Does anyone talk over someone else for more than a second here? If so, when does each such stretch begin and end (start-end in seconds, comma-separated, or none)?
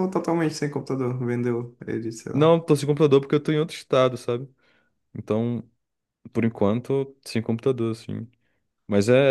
none